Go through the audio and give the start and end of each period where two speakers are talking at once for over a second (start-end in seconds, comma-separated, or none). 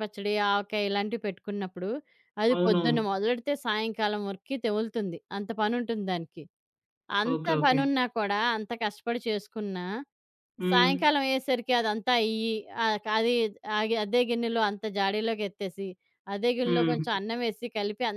none